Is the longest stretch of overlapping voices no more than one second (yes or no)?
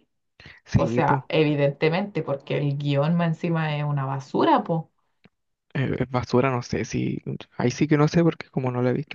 yes